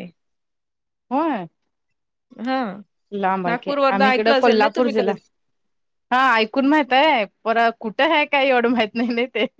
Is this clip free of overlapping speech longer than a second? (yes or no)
no